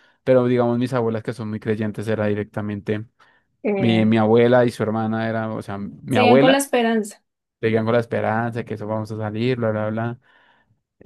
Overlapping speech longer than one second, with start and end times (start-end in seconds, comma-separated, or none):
none